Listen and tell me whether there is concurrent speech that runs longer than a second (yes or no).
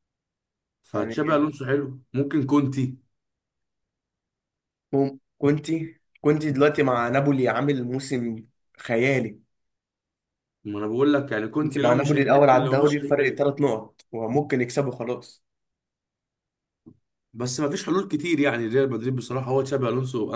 yes